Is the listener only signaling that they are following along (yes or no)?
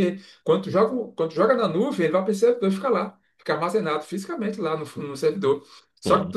yes